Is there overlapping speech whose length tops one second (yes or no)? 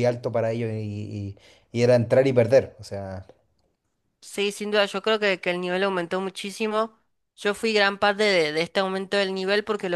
no